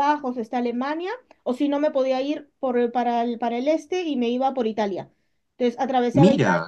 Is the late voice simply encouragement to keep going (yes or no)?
yes